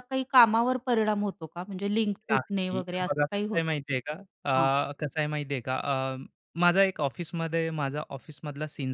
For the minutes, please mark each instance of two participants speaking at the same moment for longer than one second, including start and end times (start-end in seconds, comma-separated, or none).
2.3-3.8